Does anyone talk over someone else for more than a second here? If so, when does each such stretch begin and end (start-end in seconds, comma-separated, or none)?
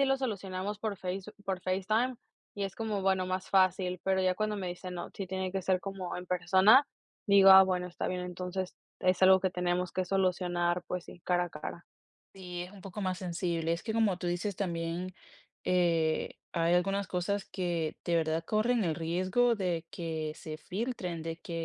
none